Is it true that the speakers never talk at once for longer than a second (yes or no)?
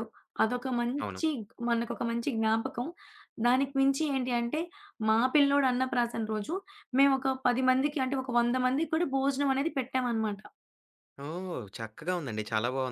yes